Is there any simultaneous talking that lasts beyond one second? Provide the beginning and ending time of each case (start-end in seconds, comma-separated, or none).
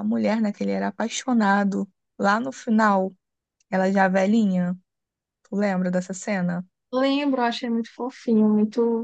none